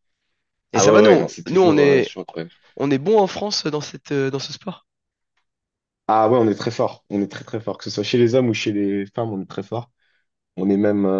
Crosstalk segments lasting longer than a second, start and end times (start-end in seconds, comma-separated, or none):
0.7-2.1